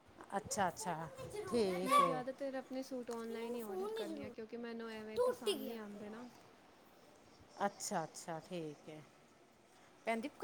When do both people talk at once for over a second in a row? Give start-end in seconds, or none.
none